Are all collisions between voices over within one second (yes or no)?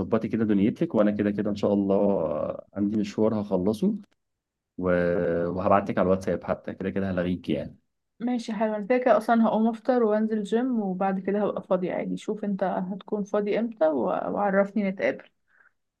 yes